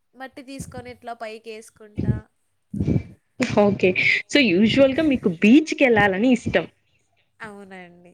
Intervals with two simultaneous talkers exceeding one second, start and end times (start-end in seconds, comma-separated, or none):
none